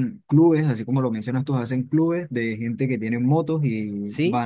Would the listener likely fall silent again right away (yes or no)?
yes